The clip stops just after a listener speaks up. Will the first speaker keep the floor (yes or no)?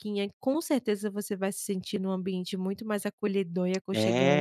no